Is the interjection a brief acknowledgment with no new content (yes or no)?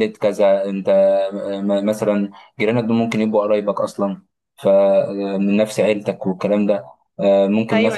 yes